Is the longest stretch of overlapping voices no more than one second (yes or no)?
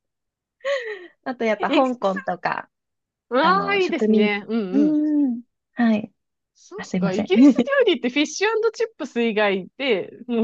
no